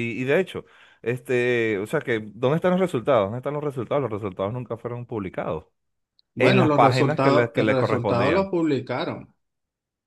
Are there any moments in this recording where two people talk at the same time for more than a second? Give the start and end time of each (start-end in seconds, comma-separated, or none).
6.4-8.5